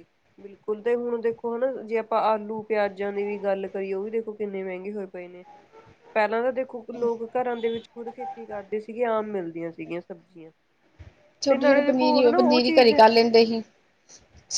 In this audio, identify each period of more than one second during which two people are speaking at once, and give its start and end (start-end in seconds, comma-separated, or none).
11.5-13.0